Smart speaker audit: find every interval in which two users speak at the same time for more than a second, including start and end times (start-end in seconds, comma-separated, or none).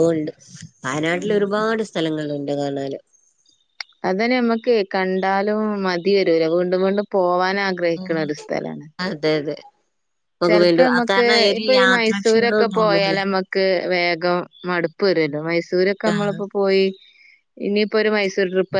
10.5-13.2